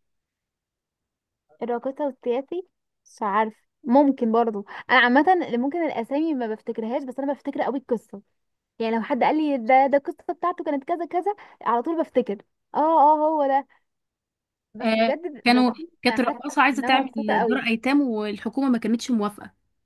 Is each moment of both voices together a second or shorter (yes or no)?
no